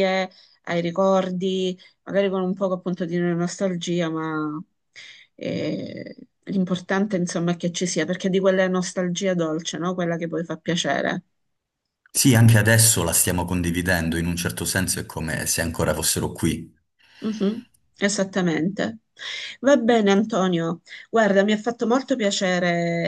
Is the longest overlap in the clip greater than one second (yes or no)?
no